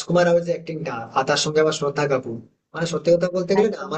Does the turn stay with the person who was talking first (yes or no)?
yes